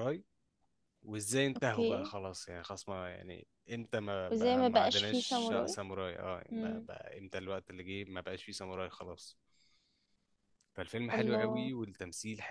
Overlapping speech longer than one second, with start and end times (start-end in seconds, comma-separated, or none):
4.3-5.8